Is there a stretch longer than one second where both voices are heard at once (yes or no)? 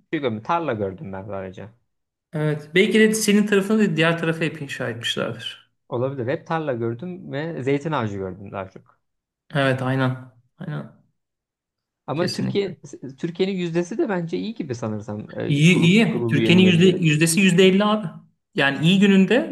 yes